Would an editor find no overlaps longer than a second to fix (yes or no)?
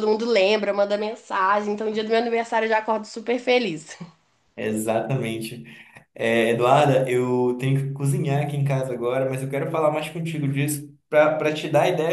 yes